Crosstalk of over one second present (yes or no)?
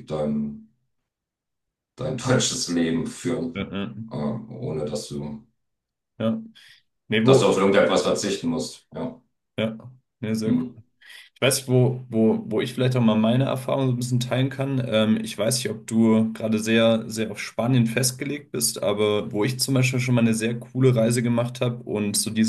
no